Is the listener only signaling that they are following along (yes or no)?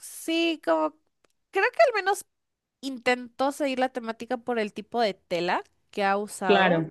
yes